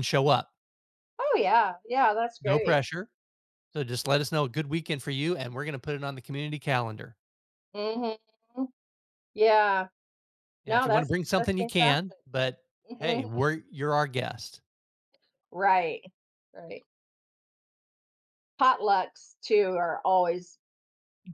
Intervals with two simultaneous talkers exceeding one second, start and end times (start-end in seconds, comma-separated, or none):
10.7-12.2